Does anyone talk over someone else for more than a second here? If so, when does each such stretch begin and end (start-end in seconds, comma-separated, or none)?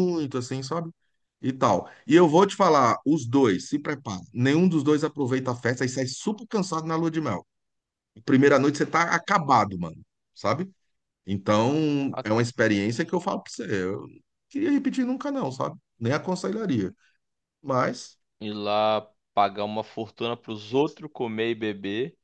none